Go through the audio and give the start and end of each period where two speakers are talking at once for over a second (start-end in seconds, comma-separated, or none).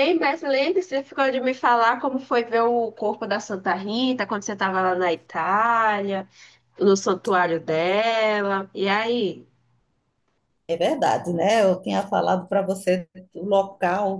none